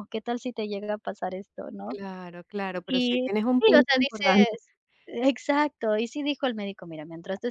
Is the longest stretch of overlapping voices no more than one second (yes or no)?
no